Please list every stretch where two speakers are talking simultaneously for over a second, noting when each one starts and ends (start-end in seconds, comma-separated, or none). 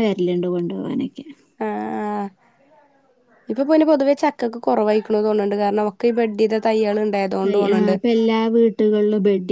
none